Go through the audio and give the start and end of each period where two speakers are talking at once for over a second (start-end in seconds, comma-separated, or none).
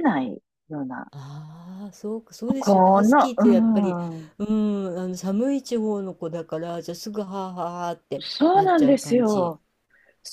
2.6-4.0, 8.2-9.6